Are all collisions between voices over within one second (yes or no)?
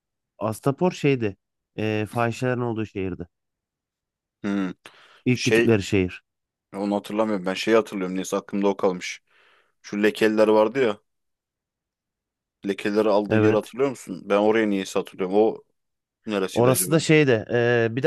yes